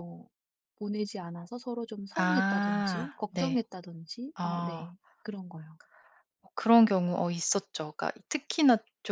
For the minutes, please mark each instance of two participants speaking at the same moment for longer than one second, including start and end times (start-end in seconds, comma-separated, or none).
2.2-3.5